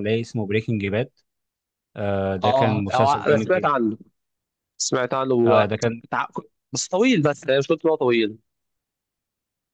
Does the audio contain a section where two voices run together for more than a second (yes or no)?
yes